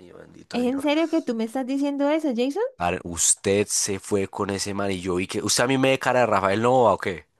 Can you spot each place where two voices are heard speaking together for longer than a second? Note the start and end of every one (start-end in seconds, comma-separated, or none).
none